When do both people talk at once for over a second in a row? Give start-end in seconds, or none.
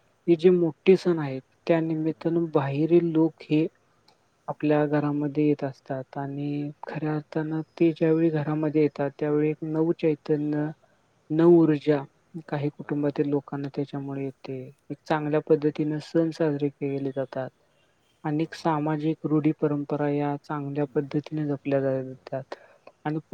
21.1-22.4